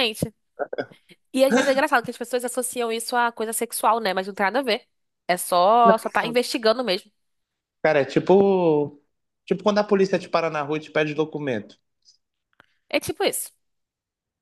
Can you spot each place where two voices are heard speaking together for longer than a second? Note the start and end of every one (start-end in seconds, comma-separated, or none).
none